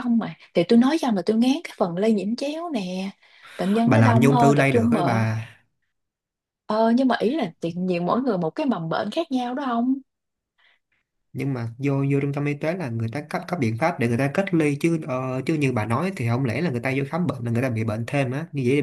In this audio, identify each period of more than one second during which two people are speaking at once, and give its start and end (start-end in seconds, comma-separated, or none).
3.9-5.3